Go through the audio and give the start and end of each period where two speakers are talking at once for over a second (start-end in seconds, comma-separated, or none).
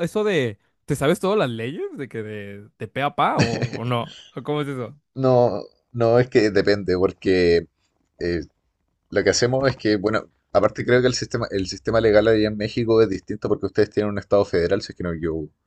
none